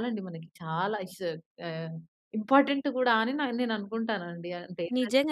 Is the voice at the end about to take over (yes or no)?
yes